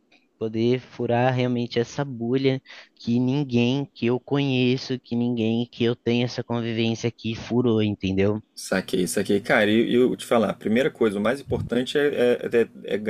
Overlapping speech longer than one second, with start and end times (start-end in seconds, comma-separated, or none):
none